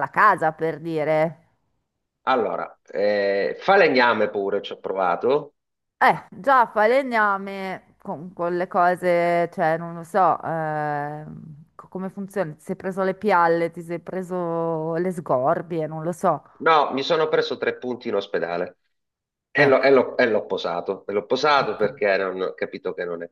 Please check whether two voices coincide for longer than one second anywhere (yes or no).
no